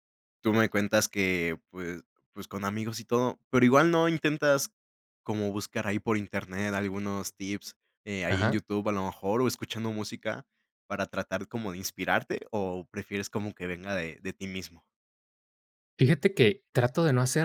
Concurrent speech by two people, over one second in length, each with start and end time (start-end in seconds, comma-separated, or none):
none